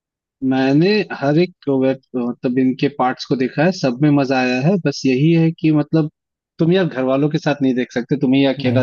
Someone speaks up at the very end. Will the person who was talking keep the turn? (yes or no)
yes